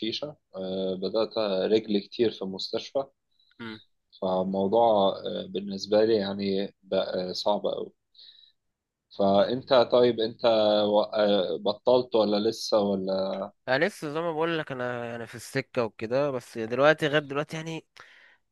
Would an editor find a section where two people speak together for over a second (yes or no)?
no